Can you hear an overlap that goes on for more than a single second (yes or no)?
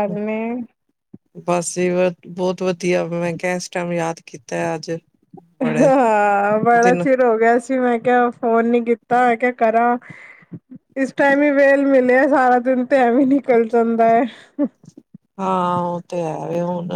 no